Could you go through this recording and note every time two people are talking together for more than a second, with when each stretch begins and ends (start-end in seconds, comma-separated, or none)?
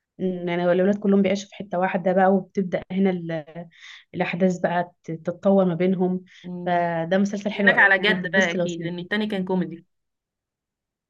7.5-9.1